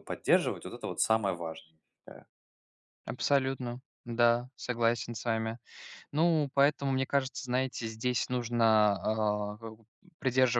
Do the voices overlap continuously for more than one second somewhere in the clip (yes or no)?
no